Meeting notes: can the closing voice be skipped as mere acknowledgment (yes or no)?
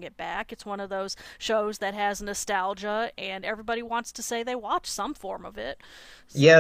no